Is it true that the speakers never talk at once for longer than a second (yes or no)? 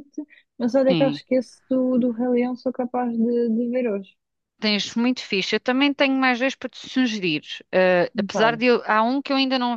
yes